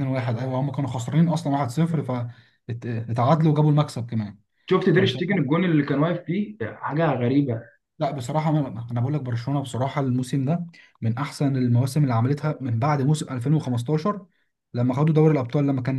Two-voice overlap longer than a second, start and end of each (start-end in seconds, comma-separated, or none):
none